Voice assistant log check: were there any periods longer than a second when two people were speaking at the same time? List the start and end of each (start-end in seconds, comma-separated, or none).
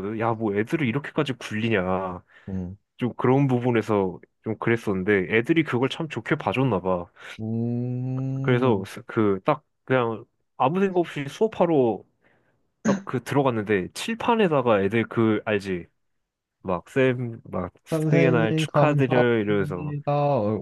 18.1-19.9